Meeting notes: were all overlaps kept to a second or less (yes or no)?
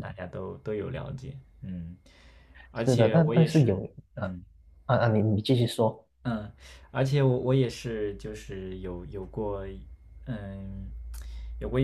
no